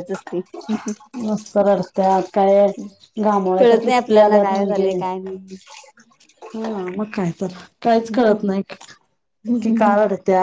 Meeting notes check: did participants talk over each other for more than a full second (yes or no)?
yes